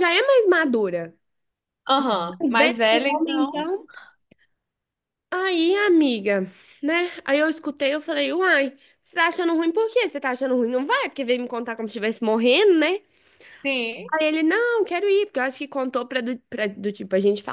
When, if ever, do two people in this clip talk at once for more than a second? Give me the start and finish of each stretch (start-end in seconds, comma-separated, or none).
2.4-3.7